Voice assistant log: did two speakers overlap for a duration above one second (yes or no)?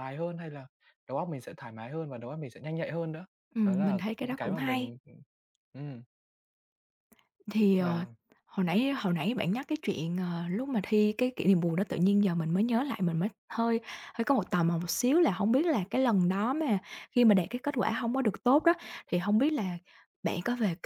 yes